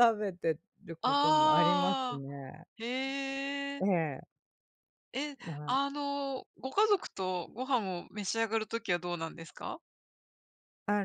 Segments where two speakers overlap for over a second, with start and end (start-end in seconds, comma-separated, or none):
1.0-2.2